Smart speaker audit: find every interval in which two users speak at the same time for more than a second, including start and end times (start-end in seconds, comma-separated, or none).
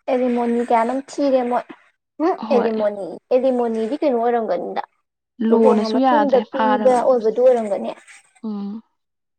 5.5-7.4